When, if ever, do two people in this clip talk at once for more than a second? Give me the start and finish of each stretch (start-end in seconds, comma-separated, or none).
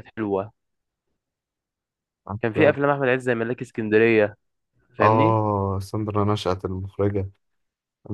none